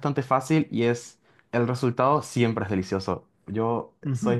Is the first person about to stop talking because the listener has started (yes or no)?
yes